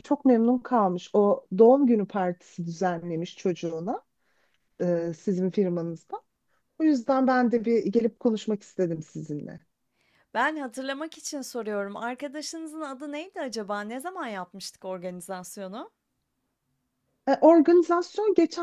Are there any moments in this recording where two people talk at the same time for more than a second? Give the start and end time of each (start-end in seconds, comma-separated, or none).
none